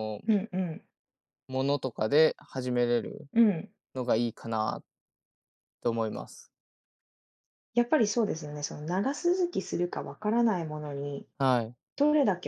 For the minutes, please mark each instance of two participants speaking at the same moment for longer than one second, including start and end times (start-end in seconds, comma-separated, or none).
none